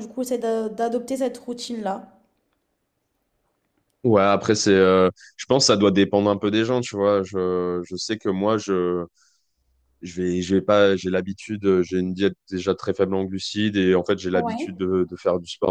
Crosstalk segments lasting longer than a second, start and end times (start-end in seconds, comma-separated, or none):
none